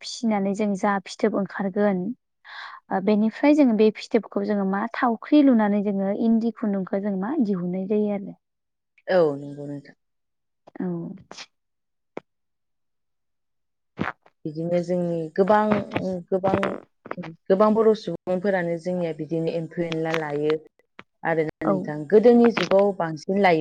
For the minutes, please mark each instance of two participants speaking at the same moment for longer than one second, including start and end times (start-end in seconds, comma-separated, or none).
none